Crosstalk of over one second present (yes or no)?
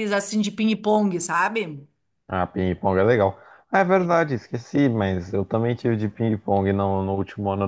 no